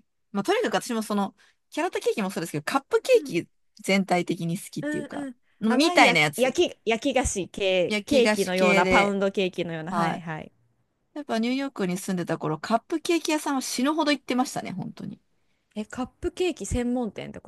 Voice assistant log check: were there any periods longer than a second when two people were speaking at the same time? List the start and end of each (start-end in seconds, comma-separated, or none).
4.8-6.6, 7.9-9.2